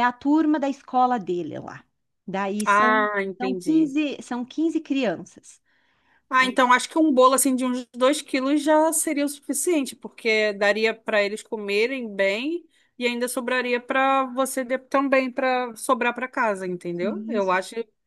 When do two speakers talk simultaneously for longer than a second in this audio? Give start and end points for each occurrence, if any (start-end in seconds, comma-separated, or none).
2.6-4.0